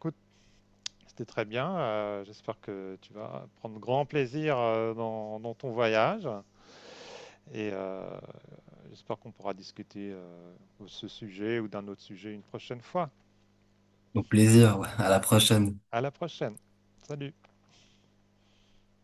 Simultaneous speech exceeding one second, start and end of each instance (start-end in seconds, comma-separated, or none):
none